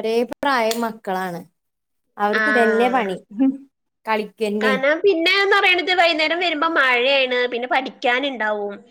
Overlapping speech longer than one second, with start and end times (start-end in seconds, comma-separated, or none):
none